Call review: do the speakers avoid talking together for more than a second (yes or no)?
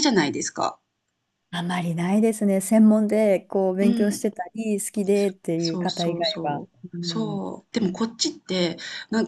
no